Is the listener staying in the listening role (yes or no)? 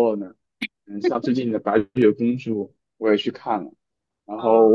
yes